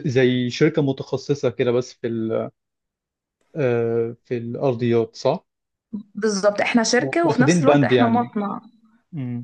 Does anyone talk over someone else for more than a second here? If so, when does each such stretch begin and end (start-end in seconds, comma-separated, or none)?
7.0-8.3